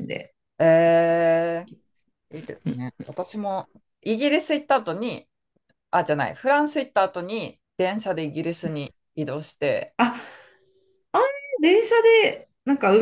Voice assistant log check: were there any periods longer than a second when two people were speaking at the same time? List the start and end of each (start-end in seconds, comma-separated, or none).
none